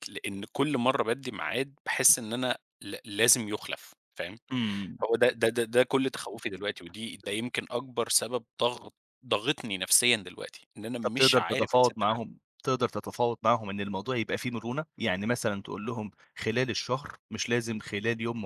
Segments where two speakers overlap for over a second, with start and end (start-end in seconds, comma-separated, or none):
11.0-12.4